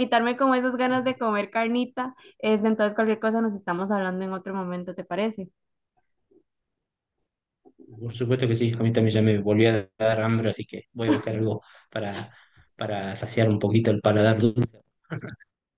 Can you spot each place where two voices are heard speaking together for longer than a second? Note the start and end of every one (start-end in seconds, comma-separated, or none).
none